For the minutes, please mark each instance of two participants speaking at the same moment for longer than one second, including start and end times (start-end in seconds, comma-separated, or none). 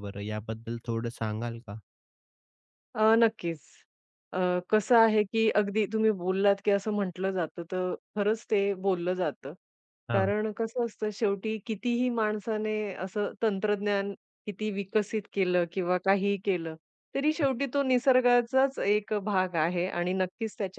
none